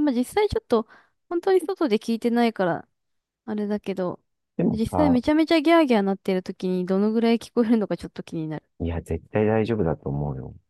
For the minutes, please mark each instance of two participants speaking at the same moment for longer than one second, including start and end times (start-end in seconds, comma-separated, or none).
none